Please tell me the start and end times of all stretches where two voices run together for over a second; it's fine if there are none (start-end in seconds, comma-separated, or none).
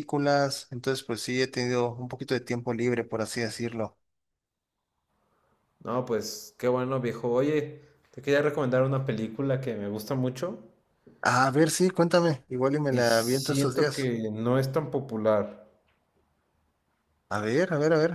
12.9-14.1